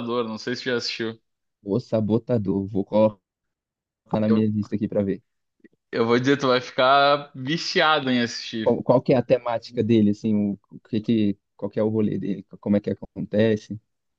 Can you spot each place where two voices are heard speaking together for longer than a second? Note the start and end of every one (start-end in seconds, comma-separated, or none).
none